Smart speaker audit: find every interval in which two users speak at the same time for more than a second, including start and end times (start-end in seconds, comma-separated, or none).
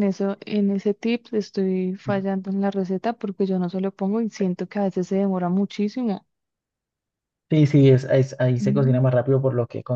none